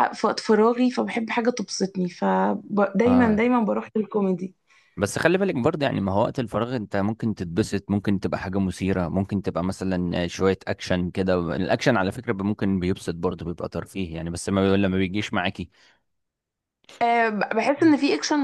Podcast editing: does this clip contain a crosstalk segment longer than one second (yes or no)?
no